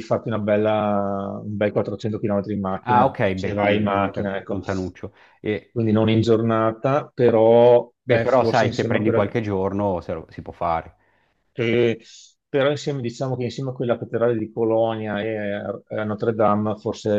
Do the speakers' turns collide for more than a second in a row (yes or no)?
yes